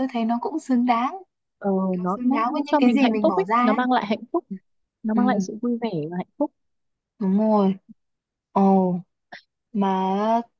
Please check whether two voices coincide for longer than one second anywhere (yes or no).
yes